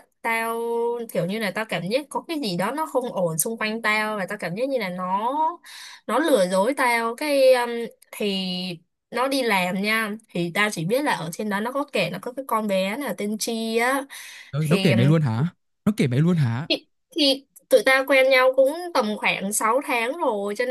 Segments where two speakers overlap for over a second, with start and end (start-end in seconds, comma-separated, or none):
none